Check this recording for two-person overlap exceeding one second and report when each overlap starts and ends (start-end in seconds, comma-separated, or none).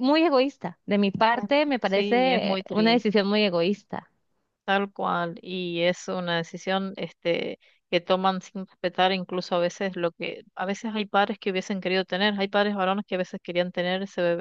1.4-3.1